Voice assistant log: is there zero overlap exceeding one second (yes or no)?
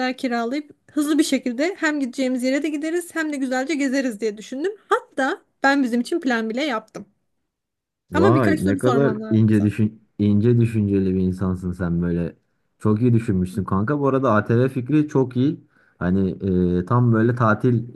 no